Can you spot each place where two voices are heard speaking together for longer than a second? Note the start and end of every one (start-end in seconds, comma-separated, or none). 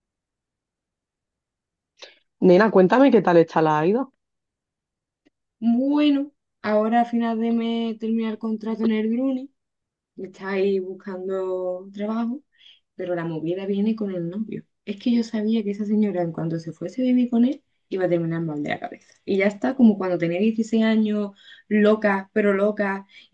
none